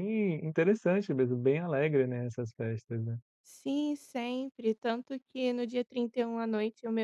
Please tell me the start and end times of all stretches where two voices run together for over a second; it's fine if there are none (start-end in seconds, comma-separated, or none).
none